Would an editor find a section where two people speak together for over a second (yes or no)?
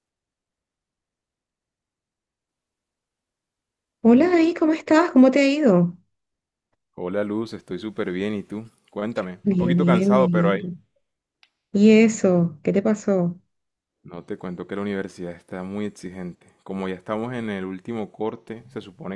yes